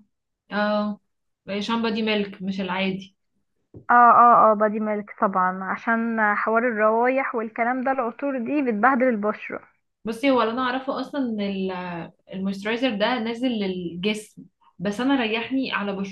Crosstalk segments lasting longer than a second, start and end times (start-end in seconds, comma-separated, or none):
none